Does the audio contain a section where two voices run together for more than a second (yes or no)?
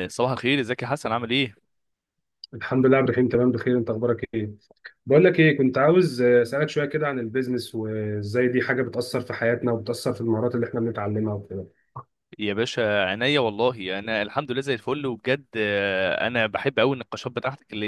no